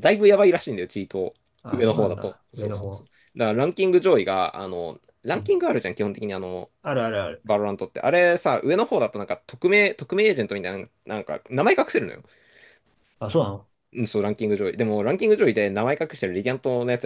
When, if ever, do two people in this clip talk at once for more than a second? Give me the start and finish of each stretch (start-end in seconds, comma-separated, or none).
1.7-3.1